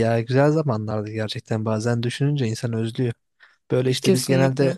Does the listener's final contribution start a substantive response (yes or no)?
no